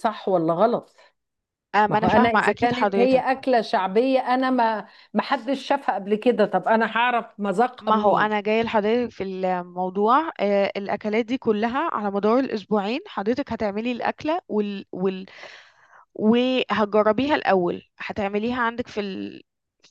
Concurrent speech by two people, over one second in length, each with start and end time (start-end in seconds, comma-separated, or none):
1.9-3.3